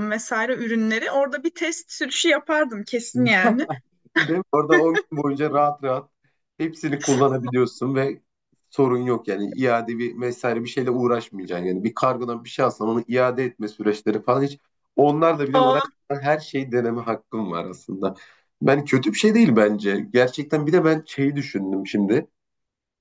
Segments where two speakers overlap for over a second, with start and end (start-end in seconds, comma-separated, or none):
none